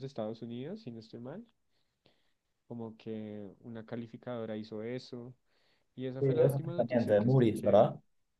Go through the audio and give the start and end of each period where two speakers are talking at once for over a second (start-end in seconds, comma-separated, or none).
6.2-7.9